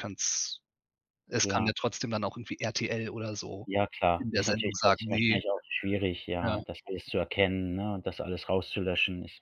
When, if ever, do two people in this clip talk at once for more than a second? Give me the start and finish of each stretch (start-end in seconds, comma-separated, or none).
4.2-5.4